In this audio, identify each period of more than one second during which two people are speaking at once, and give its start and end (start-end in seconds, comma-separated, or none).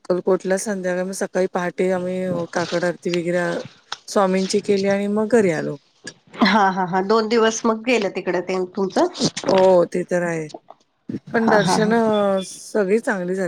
none